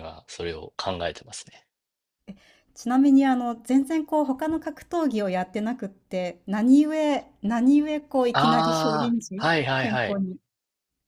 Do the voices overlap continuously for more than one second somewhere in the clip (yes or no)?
yes